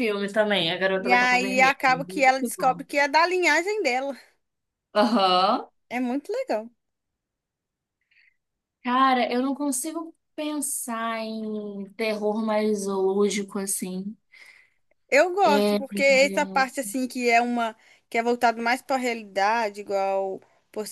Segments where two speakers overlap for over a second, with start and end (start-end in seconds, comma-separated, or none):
1.0-2.8